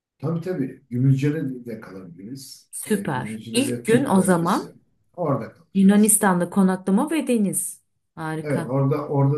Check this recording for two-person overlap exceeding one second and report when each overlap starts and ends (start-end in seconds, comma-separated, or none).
2.7-4.7